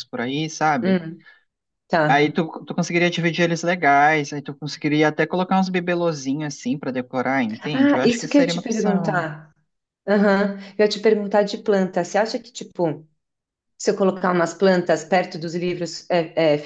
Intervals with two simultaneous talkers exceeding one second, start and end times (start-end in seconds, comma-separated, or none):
7.6-9.2